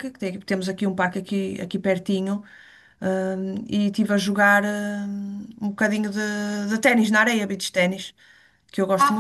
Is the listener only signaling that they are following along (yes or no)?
no